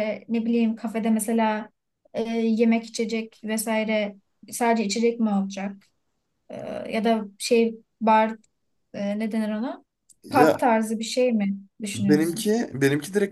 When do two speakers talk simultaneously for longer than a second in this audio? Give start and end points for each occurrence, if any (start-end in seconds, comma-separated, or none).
none